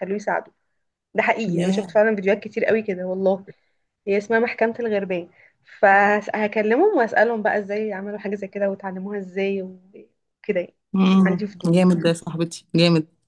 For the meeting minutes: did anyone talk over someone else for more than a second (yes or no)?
no